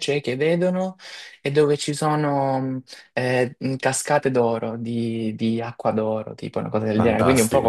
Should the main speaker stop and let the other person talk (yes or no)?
no